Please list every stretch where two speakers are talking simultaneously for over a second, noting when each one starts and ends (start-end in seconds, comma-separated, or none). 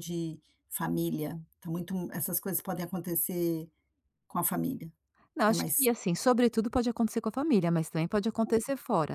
none